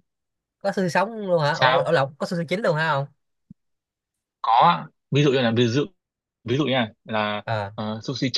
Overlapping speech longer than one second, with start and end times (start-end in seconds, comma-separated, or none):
none